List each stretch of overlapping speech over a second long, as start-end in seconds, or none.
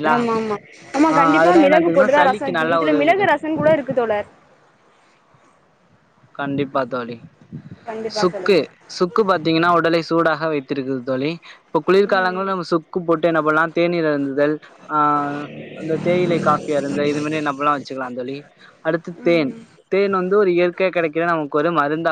1.4-3.4